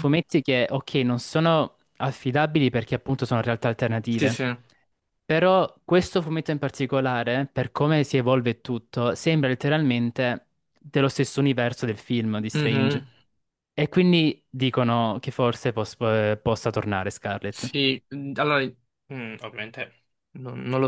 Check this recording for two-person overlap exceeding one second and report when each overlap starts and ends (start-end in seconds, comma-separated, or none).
none